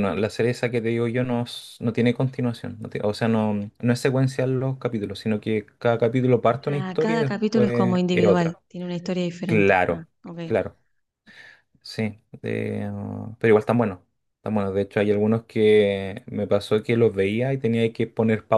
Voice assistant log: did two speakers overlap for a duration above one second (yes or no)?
yes